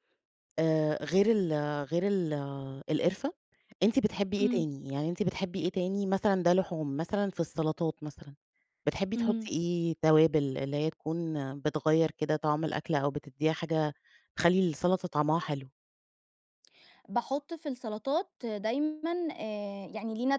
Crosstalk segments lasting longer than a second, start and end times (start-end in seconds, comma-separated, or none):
none